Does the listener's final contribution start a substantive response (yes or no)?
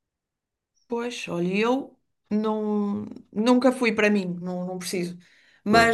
no